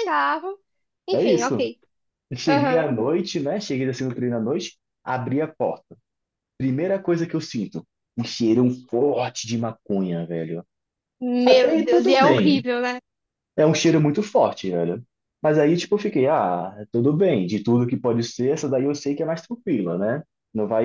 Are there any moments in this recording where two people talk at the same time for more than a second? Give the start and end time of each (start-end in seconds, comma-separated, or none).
11.4-12.7